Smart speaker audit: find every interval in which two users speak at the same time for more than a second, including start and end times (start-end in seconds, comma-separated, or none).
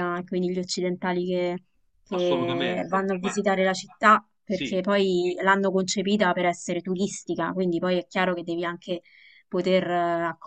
2.1-3.4